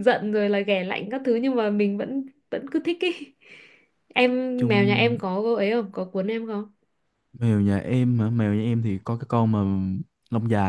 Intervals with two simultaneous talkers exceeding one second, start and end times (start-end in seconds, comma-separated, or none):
none